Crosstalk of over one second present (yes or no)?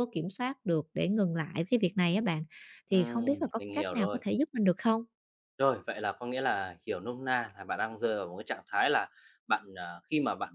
yes